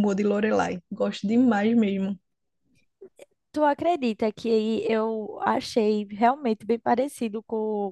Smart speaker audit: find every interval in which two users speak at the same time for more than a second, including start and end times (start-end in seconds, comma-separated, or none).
none